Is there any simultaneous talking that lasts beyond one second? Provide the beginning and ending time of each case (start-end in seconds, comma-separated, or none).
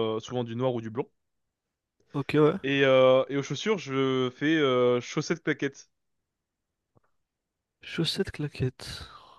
none